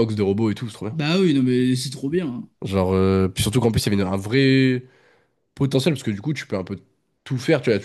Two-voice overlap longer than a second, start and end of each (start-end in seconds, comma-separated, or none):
none